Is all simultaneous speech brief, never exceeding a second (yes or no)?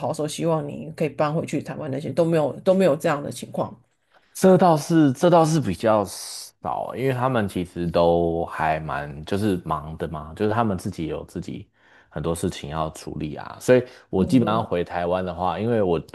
yes